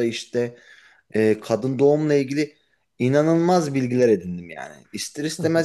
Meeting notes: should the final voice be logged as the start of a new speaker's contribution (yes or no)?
no